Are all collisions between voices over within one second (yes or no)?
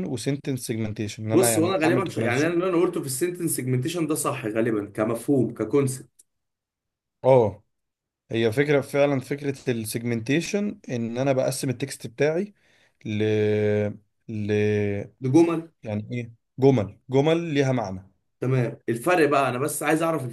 no